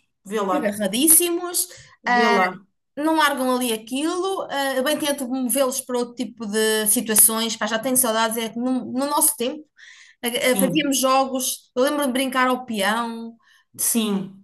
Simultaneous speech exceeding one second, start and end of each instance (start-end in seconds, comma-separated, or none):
none